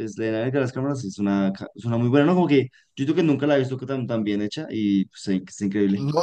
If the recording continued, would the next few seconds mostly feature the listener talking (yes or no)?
yes